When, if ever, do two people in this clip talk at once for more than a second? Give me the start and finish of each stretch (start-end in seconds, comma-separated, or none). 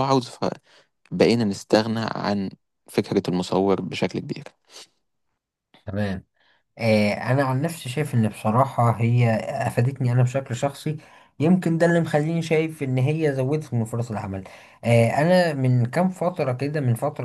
none